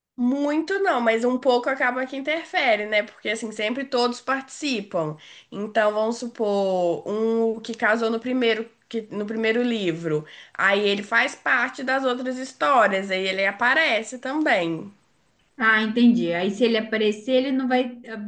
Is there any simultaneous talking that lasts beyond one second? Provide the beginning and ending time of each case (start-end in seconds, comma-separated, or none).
none